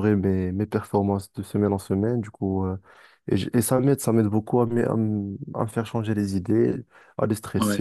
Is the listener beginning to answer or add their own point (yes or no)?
no